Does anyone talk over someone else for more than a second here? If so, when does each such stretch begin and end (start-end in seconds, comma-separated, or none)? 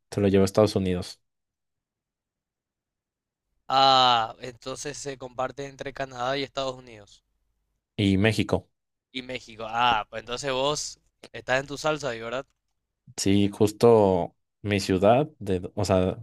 none